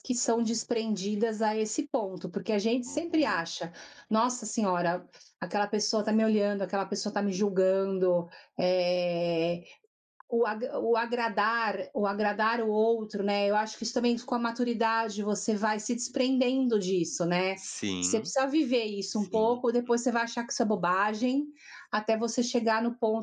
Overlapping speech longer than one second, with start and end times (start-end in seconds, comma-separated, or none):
none